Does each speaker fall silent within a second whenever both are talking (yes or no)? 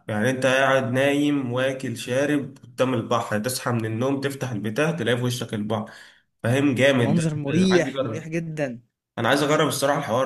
no